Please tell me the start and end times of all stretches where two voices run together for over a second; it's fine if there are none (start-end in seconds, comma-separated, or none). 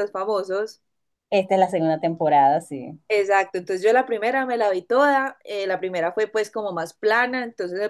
none